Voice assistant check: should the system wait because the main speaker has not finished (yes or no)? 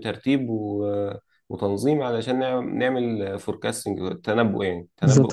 no